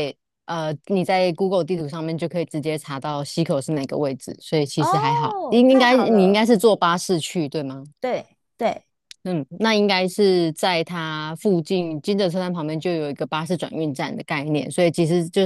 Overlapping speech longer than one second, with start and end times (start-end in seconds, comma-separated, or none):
4.8-6.5